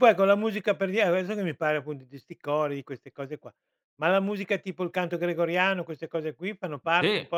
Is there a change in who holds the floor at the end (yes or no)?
yes